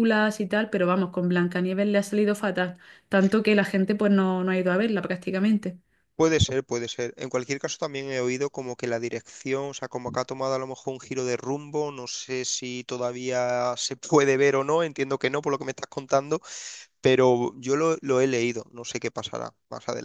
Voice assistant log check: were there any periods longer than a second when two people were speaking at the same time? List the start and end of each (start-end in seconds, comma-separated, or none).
none